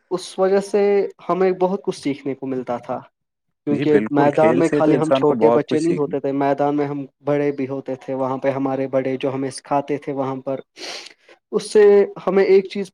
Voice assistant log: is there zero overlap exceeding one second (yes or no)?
no